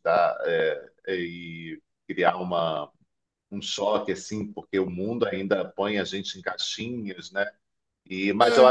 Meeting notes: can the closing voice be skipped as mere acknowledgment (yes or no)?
yes